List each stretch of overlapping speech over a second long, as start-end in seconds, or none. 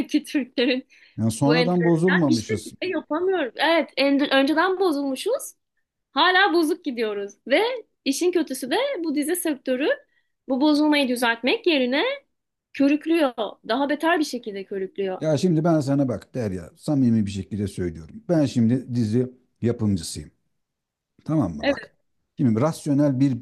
1.4-2.7